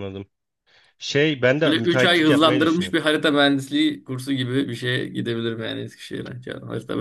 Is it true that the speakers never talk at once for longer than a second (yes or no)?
no